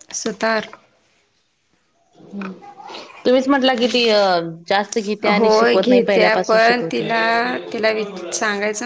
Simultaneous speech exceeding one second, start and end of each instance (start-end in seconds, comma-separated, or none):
5.4-7.1